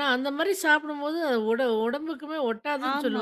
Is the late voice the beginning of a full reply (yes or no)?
yes